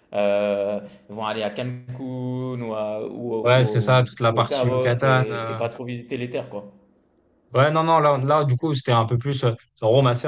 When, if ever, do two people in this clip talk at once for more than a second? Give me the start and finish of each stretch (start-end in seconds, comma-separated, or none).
3.4-5.6